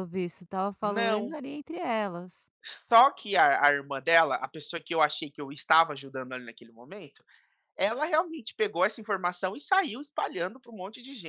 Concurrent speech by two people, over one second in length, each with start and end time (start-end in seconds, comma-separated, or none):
none